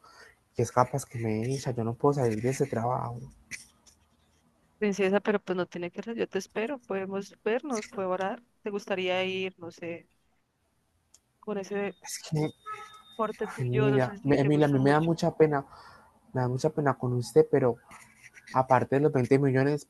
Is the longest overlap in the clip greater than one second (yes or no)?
yes